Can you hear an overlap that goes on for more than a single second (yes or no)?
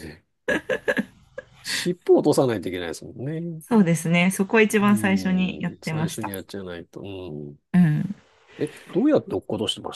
yes